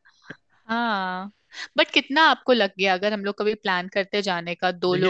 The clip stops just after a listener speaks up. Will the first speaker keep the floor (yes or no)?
no